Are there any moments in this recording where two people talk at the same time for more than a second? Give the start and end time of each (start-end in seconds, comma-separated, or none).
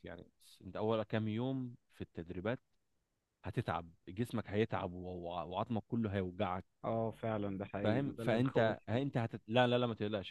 7.8-9.0